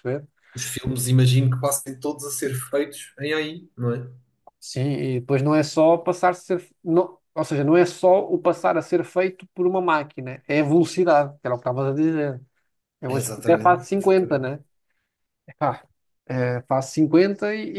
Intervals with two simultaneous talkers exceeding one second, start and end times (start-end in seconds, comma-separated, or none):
13.1-14.5